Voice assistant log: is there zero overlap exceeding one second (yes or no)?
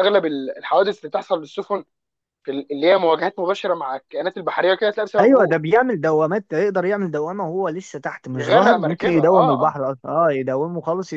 no